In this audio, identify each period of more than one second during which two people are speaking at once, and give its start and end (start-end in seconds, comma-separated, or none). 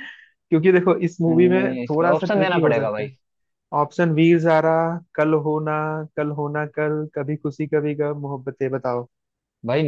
1.3-3.1